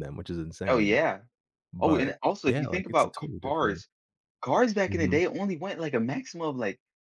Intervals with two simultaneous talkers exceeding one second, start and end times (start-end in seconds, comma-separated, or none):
1.8-3.8